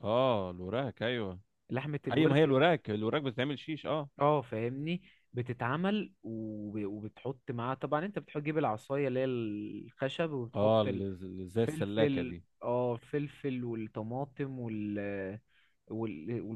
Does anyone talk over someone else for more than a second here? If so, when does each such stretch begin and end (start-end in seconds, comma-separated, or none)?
10.6-12.4